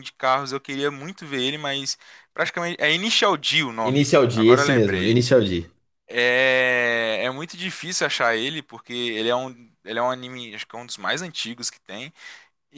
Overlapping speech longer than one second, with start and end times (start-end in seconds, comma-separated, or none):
3.8-5.2